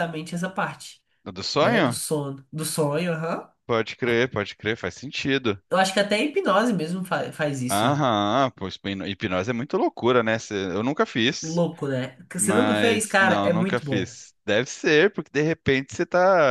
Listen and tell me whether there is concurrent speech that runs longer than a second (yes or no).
yes